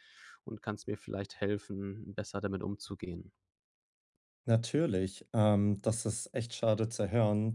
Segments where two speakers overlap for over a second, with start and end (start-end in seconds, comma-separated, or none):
none